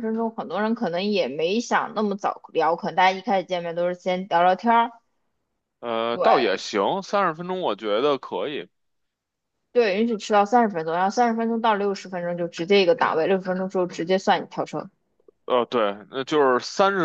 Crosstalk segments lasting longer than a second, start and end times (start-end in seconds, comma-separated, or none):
none